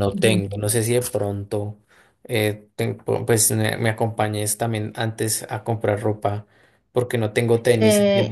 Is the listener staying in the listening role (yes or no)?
no